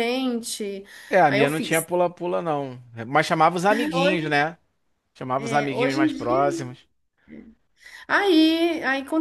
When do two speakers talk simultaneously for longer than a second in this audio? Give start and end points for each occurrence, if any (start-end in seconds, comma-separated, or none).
5.3-6.7